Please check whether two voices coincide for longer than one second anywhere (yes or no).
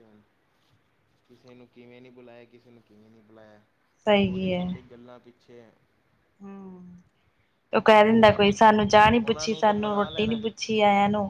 yes